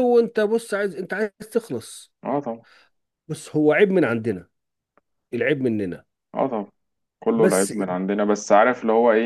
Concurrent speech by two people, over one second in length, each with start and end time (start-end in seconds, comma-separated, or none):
none